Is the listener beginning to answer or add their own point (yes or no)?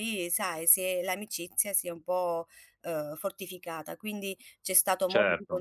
no